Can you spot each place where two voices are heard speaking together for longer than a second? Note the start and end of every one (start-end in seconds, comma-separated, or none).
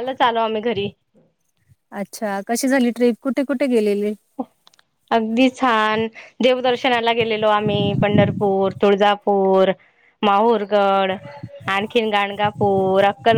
none